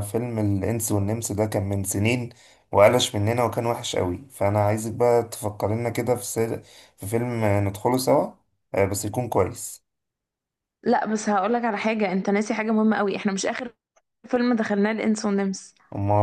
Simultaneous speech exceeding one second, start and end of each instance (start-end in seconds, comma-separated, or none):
none